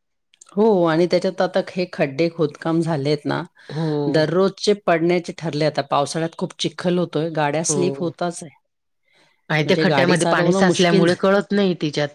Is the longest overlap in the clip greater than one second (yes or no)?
yes